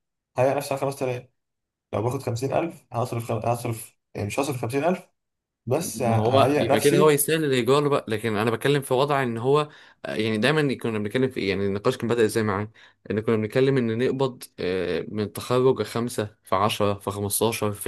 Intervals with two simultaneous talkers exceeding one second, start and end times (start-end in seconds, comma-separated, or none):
5.8-7.2